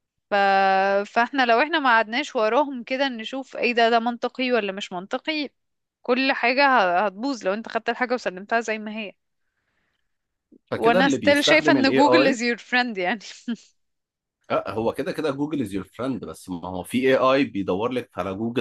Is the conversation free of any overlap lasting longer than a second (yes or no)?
no